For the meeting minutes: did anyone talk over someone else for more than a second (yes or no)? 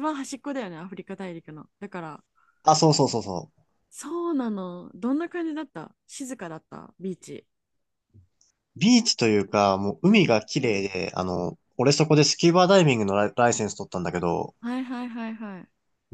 no